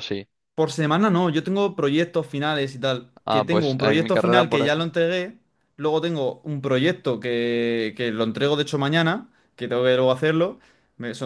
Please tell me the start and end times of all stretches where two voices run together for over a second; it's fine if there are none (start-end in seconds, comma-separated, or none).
3.2-5.0